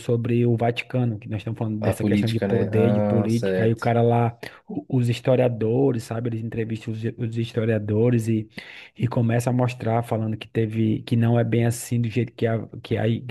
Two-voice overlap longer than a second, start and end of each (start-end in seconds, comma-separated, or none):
1.8-3.8